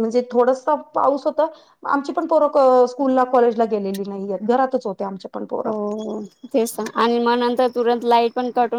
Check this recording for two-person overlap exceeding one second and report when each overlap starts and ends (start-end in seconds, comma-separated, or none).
none